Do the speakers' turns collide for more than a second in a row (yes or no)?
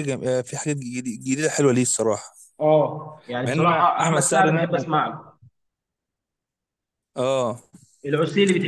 yes